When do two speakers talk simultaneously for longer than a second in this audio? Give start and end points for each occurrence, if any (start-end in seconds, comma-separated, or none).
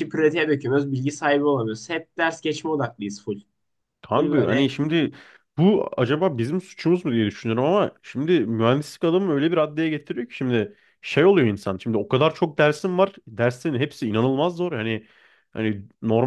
none